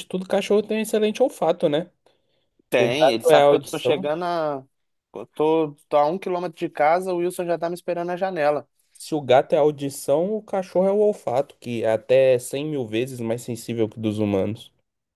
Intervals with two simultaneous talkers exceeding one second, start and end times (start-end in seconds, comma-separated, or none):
2.8-4.1